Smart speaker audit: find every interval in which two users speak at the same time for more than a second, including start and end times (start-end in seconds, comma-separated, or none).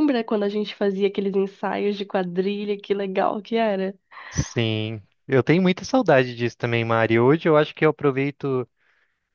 none